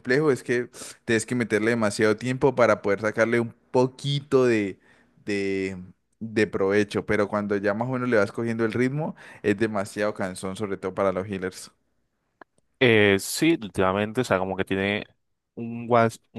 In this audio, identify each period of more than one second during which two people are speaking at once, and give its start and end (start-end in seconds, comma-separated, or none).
none